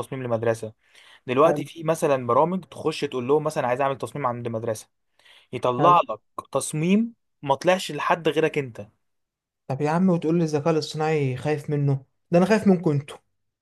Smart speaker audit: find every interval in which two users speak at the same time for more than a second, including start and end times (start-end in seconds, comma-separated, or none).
none